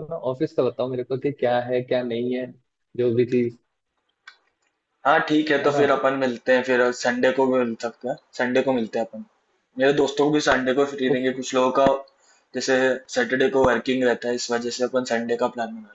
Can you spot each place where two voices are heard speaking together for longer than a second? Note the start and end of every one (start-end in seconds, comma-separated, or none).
none